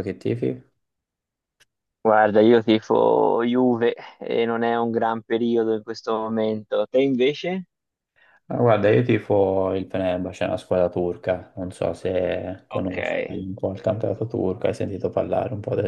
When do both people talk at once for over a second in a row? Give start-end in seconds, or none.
none